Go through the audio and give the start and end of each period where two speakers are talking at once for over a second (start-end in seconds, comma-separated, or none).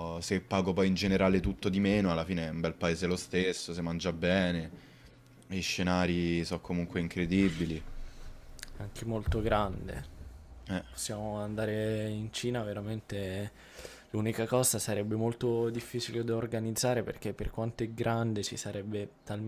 none